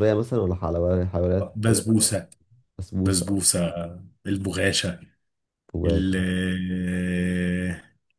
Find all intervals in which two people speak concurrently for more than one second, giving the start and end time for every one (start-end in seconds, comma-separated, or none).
none